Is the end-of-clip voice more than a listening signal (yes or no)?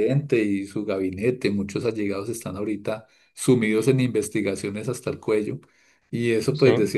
no